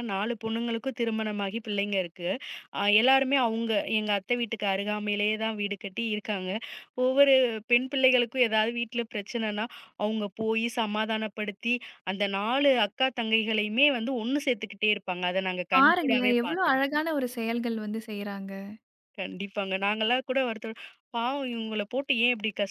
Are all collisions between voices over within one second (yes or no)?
no